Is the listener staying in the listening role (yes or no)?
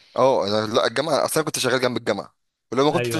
yes